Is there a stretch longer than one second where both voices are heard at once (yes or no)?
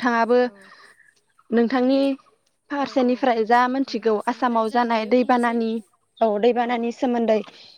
yes